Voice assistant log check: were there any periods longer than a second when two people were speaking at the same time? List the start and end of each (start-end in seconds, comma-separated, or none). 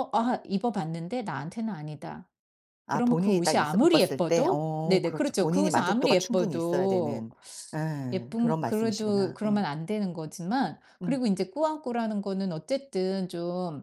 2.9-7.3, 8.1-9.6